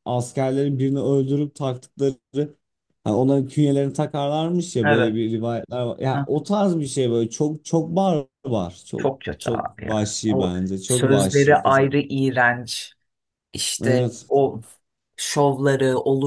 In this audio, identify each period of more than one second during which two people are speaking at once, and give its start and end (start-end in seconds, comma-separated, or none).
9.0-11.9